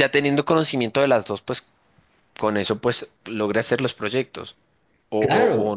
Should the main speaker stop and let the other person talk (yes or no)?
yes